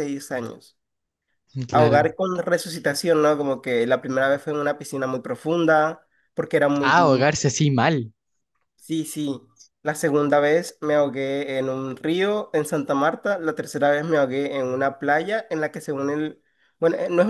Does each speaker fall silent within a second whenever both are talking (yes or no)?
yes